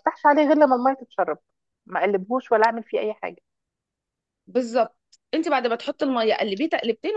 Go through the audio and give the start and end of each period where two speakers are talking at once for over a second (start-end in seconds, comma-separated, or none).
none